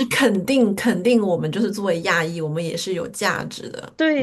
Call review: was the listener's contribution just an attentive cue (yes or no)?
no